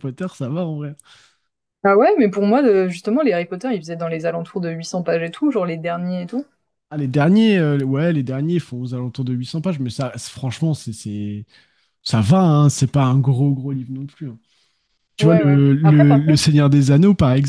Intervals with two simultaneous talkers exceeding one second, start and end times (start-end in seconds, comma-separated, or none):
15.2-16.5